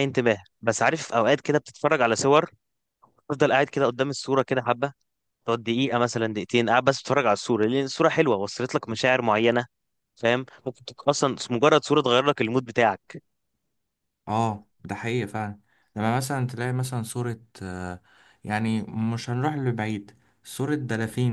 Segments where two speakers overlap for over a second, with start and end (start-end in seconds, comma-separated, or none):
none